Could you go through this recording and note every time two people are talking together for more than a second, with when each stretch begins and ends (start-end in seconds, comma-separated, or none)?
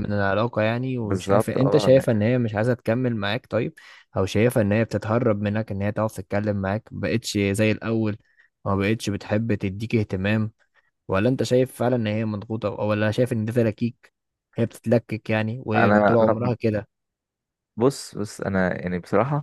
1.0-2.2